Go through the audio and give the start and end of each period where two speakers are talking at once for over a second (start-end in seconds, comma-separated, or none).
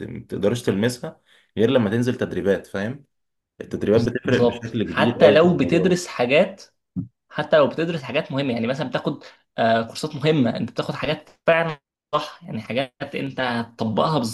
4.3-5.9